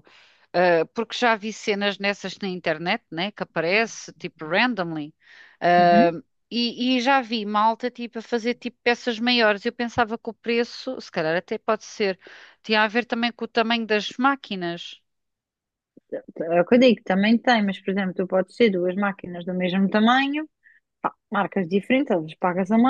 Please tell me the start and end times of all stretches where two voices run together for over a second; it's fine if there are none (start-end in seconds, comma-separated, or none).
none